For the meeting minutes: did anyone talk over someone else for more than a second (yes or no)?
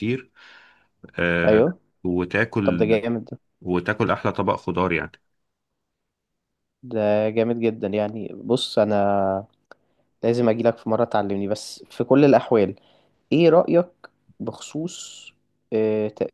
no